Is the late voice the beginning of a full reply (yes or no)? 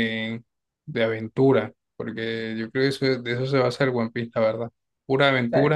no